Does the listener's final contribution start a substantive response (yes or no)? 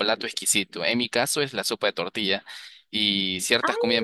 no